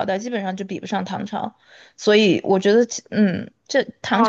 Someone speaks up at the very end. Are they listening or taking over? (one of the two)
taking over